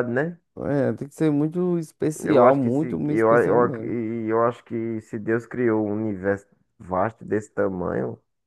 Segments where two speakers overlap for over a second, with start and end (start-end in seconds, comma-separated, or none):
2.2-3.9